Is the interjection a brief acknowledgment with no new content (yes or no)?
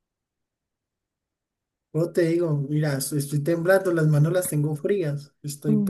no